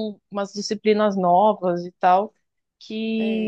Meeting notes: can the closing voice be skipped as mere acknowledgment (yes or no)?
yes